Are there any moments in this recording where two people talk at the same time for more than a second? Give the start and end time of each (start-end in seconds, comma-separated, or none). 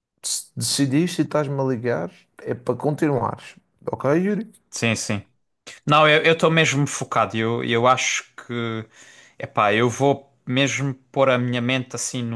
none